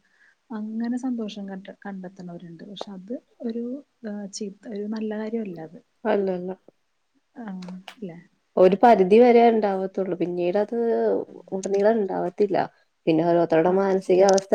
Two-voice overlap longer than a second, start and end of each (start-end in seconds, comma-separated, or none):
none